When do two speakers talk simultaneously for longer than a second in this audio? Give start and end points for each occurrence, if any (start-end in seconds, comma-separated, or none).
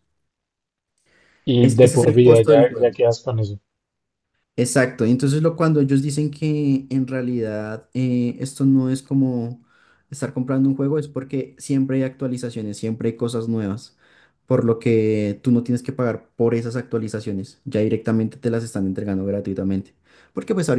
1.6-3.0